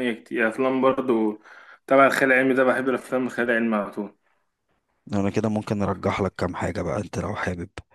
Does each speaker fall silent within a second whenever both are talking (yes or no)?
yes